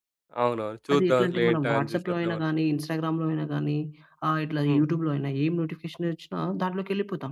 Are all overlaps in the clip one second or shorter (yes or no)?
no